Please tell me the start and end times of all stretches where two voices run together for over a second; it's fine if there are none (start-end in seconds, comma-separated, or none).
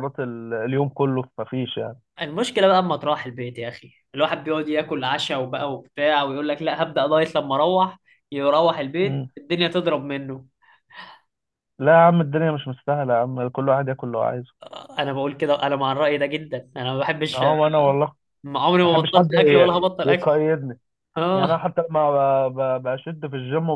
18.8-20.3